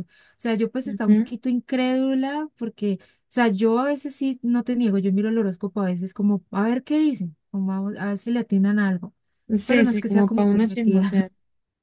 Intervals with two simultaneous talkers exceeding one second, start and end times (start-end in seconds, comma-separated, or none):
9.6-11.3